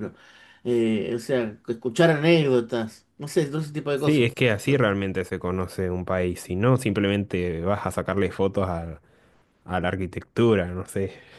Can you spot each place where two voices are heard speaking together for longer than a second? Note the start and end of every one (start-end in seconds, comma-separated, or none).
none